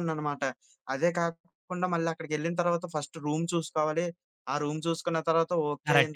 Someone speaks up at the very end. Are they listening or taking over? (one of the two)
taking over